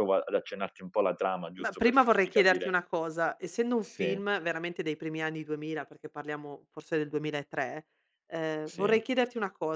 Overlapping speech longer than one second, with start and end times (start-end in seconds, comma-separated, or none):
1.6-2.8